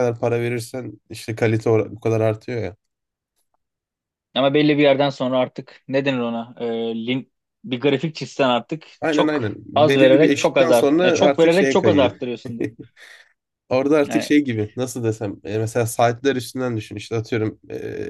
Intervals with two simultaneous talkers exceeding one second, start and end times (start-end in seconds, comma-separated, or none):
9.0-12.2